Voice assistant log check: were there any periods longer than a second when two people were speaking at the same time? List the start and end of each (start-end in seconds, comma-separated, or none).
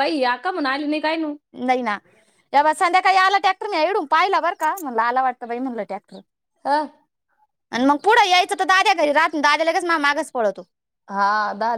none